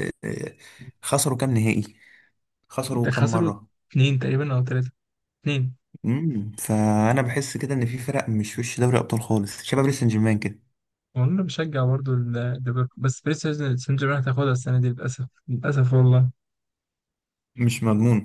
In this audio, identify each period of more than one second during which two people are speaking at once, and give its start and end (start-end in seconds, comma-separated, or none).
none